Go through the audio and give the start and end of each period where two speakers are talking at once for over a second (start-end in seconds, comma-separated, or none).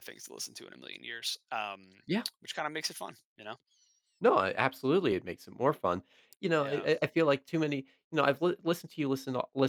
none